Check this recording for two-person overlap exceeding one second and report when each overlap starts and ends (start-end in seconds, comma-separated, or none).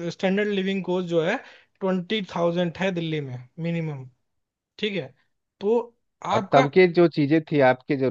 none